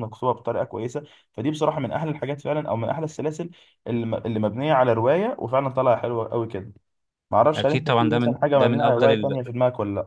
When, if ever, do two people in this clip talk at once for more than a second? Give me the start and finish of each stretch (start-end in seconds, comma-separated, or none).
7.5-9.4